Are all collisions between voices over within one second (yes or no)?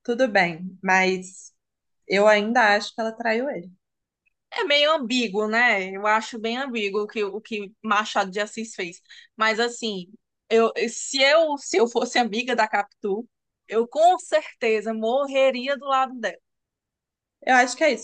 yes